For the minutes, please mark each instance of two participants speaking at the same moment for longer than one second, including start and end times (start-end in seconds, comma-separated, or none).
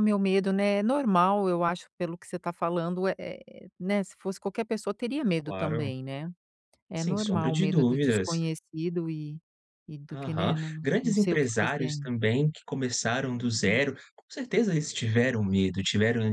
7.0-8.3, 10.1-12.1